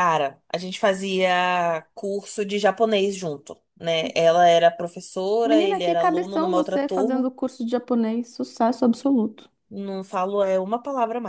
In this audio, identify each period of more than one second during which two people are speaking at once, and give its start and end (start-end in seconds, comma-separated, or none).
5.4-7.3